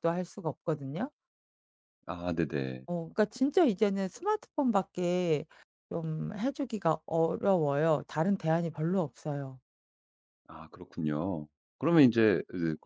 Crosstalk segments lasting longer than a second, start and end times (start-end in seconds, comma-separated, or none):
none